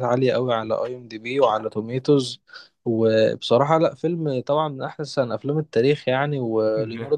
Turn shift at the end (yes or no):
no